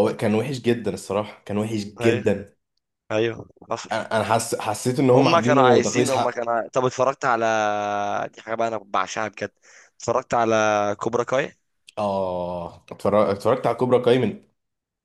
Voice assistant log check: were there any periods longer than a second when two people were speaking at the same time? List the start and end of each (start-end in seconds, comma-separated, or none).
5.2-6.5